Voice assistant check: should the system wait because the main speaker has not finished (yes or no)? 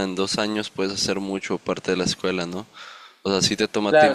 yes